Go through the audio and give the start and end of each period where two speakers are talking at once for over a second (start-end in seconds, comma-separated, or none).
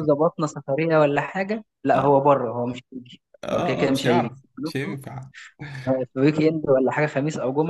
3.4-5.0